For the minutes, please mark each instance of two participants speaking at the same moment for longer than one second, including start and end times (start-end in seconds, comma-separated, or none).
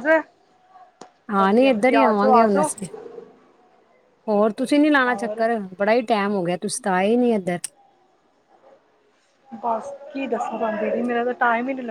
1.4-2.7